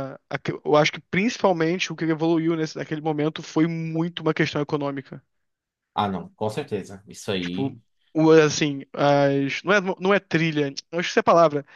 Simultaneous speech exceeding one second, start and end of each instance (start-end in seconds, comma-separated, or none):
none